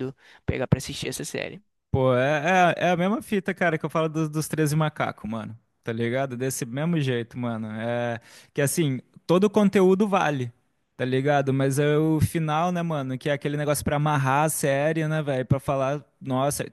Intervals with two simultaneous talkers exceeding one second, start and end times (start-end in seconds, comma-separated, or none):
none